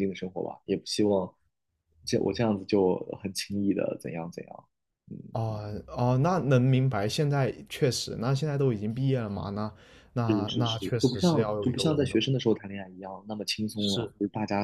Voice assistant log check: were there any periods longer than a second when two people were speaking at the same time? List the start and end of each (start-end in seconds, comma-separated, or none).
10.2-12.5